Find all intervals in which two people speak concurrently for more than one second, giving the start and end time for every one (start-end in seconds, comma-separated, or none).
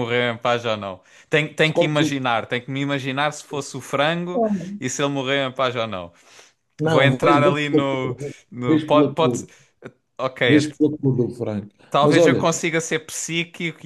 6.8-9.4